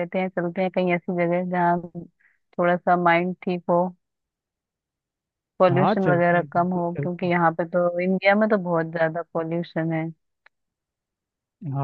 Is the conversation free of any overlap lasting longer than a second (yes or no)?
no